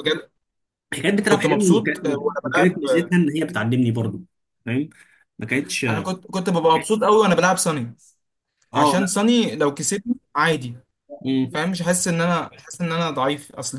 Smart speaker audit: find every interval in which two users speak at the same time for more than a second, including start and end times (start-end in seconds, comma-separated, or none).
1.2-3.1